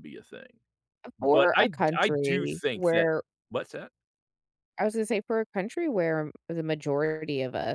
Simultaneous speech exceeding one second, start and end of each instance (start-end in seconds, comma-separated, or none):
1.2-3.1